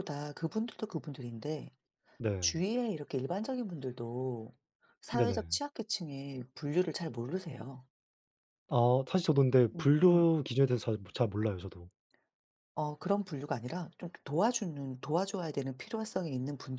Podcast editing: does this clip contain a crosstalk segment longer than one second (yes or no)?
no